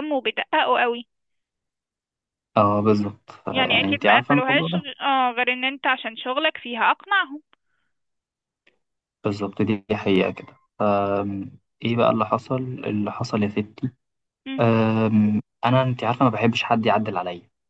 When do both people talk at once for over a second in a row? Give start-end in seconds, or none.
3.5-4.9